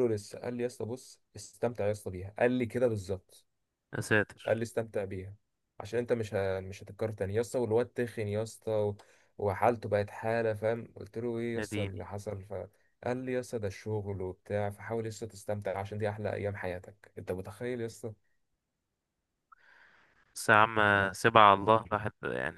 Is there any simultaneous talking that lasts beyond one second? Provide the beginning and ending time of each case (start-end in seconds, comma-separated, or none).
none